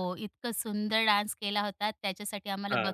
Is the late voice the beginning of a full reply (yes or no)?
no